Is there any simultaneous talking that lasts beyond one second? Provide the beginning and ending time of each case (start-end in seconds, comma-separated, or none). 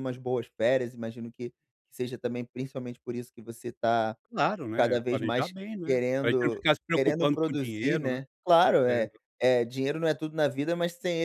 4.8-8.2